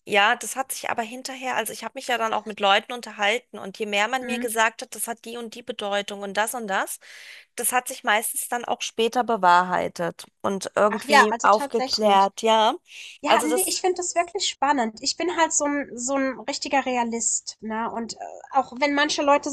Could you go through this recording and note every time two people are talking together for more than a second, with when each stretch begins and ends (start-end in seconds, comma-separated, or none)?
10.9-12.3